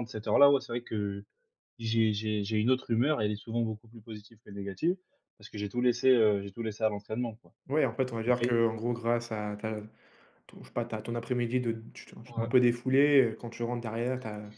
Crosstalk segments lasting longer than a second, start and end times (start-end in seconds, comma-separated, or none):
none